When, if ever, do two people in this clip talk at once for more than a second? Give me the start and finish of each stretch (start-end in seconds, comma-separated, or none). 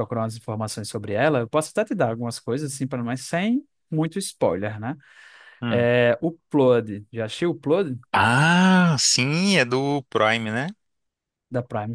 none